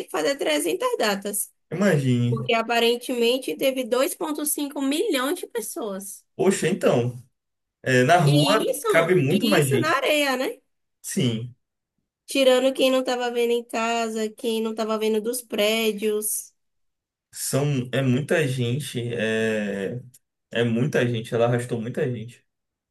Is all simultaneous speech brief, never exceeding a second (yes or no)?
no